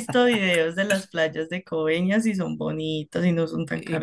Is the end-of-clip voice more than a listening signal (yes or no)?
yes